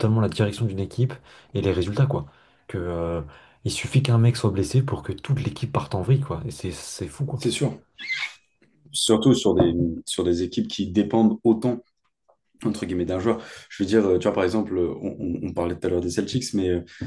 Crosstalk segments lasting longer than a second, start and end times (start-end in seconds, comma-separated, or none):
none